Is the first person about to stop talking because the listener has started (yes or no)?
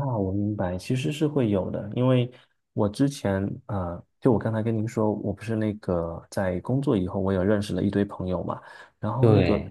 no